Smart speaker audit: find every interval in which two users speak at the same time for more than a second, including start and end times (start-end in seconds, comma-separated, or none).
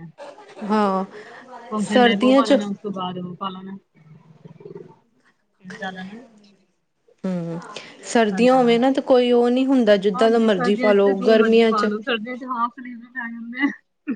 10.1-11.9